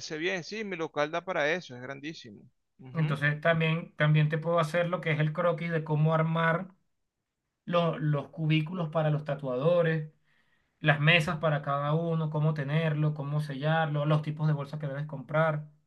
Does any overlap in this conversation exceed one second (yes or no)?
no